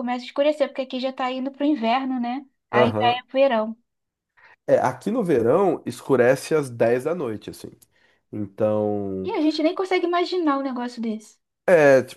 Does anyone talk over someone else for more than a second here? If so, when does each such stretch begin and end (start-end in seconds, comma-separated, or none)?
none